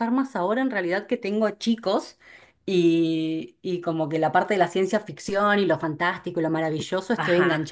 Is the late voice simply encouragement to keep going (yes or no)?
yes